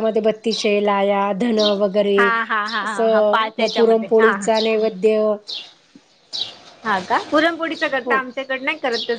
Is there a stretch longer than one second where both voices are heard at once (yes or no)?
yes